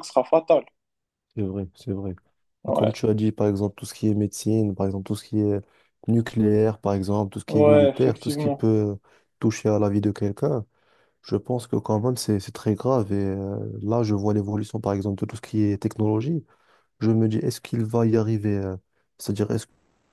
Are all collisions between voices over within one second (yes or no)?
no